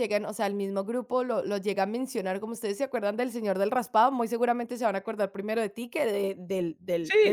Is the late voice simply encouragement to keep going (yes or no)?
no